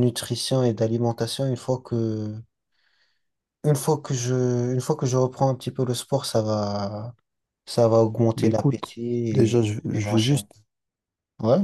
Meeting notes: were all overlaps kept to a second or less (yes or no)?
no